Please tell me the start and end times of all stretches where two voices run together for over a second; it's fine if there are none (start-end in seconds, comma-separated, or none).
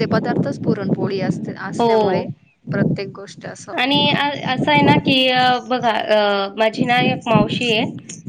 none